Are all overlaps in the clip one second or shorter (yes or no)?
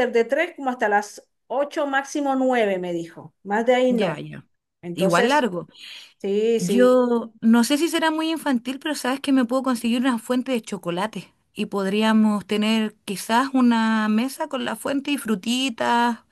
yes